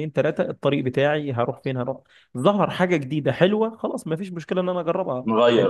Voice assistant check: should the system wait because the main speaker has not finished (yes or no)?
yes